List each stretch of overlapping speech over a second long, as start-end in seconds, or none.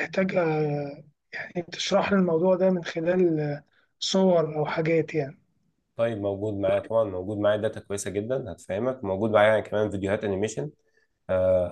none